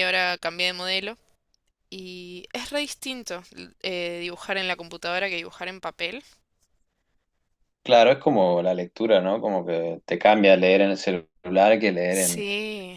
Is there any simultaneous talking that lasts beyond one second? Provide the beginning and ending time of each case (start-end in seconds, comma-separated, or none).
none